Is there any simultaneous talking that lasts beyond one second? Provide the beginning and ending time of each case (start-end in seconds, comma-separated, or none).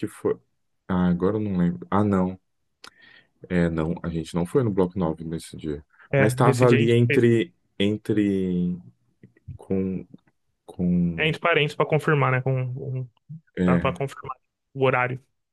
6.1-7.3